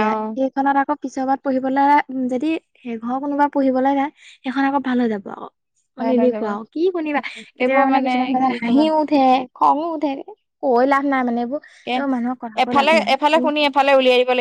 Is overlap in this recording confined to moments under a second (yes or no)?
yes